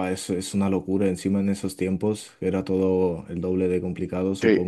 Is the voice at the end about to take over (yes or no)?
yes